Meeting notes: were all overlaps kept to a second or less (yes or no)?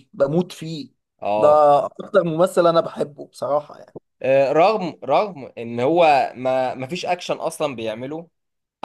yes